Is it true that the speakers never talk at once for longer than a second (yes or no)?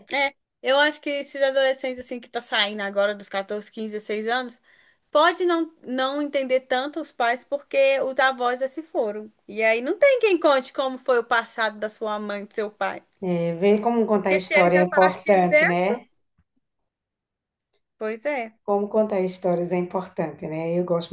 no